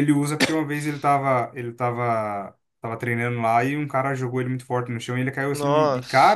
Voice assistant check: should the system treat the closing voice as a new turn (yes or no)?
no